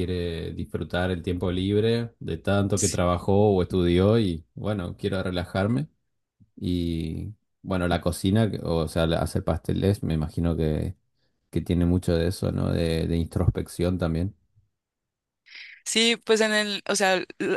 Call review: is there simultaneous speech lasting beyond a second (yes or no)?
no